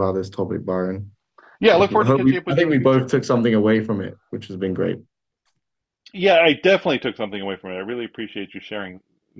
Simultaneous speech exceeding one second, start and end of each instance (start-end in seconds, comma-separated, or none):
1.7-3.1